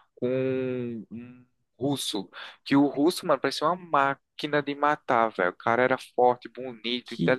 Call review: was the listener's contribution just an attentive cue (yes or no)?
no